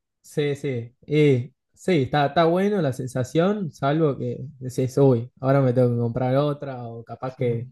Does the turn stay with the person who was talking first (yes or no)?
yes